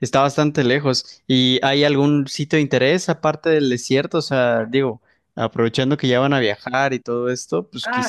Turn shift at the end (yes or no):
yes